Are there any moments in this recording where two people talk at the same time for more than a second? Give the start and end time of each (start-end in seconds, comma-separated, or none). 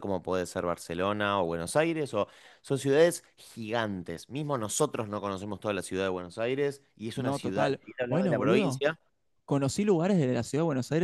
7.1-8.8